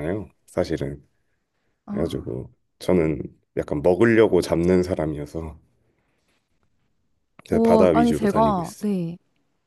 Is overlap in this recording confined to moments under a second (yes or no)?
no